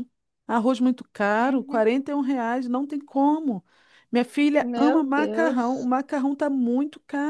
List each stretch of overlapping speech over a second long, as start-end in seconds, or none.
4.6-5.9